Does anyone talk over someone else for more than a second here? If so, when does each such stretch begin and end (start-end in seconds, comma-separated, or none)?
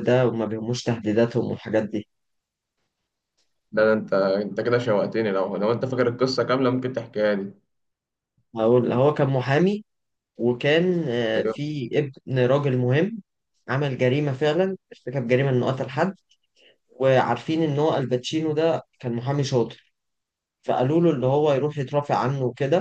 none